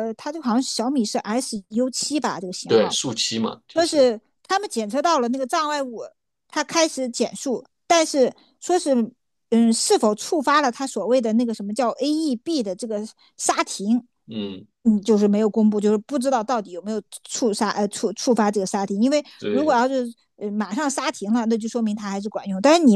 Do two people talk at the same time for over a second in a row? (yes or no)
no